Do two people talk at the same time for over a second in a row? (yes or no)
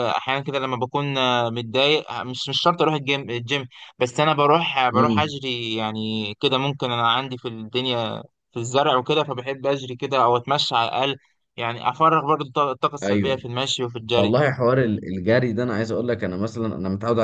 no